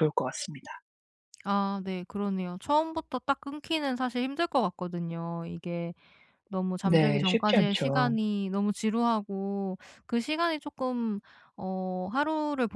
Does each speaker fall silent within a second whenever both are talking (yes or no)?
no